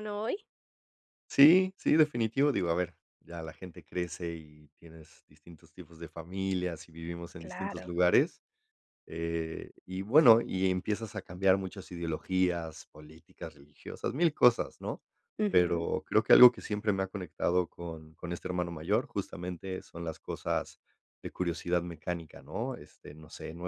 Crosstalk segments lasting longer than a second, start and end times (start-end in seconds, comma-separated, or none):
none